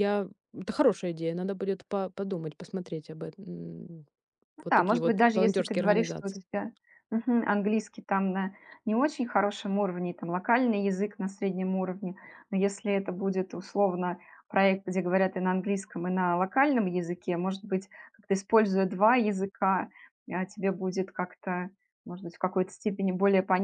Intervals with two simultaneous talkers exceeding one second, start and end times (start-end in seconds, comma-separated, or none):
4.6-6.4